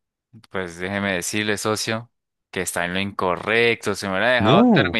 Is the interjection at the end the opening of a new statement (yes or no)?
no